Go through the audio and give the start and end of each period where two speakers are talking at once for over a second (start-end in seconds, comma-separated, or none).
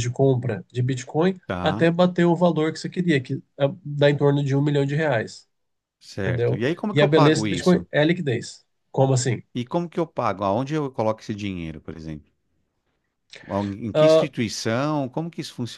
6.2-7.8